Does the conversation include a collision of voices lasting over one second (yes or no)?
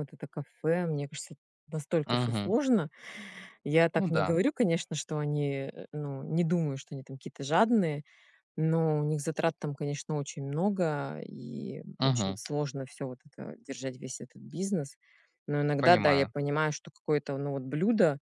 no